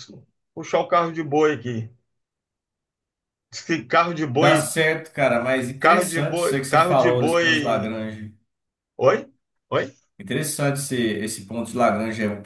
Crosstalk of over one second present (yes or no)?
yes